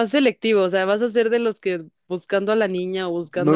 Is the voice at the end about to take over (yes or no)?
yes